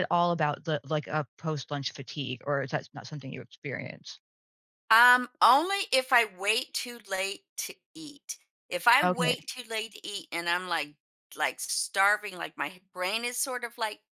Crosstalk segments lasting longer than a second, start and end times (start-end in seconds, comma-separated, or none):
none